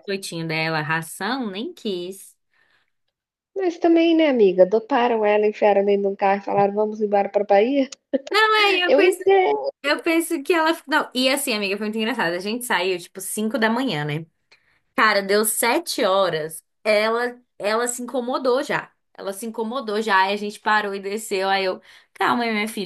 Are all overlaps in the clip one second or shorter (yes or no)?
yes